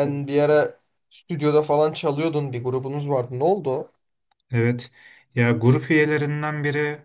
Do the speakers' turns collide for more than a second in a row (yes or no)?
no